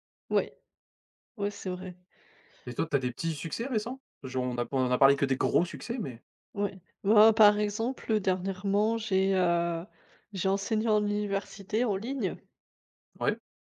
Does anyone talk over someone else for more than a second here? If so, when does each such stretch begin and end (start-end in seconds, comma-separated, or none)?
none